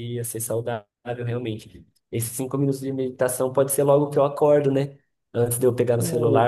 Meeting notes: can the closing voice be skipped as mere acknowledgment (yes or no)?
yes